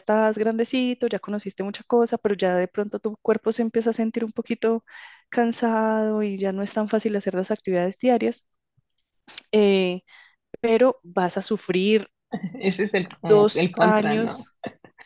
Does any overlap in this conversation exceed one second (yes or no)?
yes